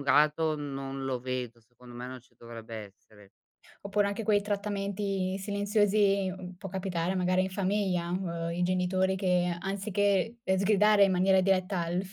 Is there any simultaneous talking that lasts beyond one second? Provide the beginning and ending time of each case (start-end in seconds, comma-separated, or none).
none